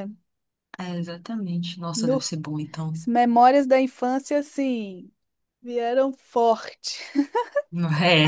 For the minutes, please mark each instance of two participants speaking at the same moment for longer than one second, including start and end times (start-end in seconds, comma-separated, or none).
none